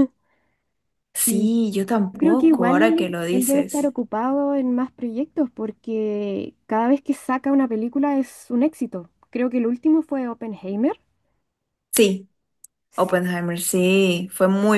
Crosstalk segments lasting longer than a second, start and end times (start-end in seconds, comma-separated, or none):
2.1-3.9